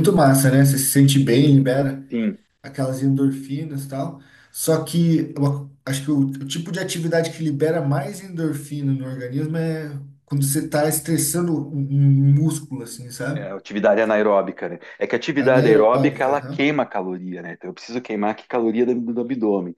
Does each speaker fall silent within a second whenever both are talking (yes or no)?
no